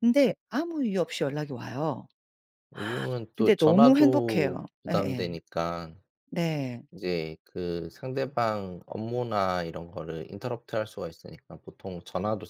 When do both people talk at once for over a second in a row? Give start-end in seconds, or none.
3.4-5.3